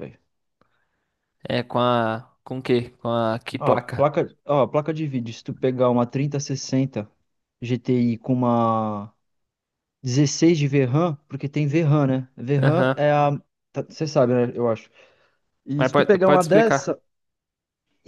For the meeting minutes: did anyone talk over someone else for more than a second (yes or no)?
yes